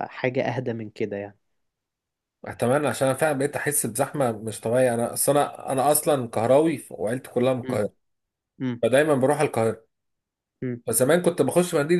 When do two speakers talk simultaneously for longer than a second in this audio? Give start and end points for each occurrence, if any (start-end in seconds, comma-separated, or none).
none